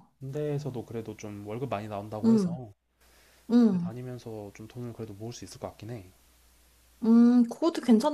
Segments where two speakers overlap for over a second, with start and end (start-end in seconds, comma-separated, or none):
none